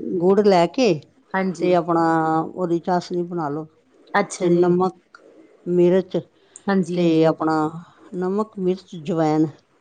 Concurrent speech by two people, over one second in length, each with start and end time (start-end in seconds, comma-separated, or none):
none